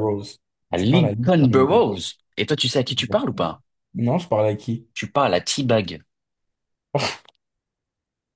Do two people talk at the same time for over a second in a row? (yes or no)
yes